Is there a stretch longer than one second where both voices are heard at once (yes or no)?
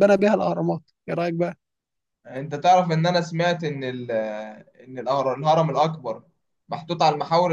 no